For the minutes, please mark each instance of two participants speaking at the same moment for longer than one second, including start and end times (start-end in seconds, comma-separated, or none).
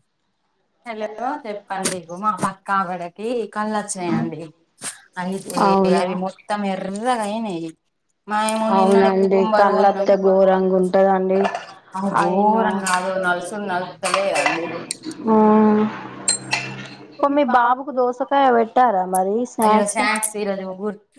8.8-10.1